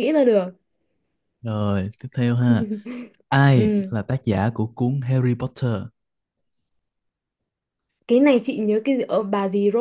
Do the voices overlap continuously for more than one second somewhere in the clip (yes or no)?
no